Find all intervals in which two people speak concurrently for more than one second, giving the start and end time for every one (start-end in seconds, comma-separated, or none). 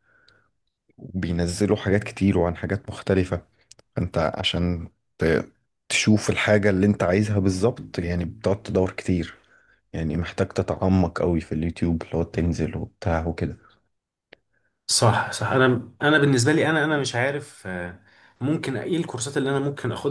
none